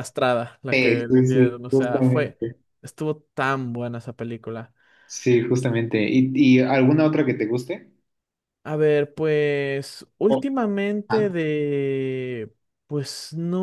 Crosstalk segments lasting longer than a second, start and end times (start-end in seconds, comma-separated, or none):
0.7-2.4